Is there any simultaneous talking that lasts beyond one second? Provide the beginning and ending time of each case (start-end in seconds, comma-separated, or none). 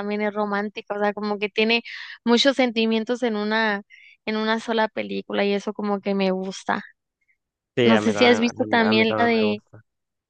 7.9-9.6